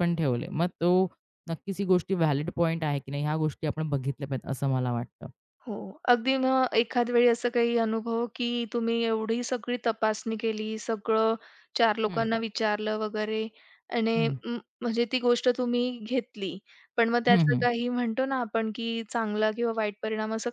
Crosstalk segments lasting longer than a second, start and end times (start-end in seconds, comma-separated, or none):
none